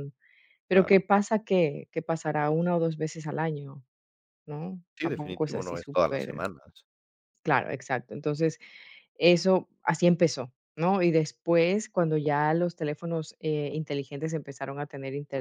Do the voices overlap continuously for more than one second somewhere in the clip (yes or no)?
yes